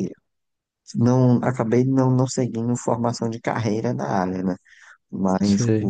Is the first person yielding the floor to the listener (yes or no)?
no